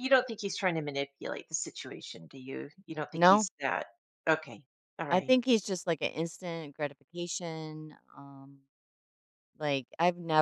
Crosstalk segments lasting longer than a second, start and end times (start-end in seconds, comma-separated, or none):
none